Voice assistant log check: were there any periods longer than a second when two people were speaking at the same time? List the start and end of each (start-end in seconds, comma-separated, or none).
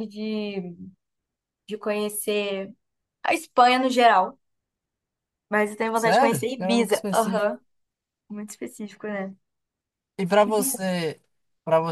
5.9-7.5